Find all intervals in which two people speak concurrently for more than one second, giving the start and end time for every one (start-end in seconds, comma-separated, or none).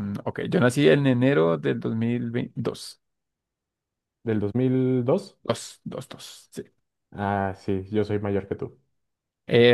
none